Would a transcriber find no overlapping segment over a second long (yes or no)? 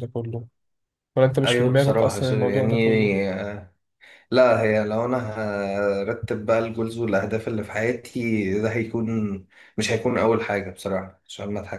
no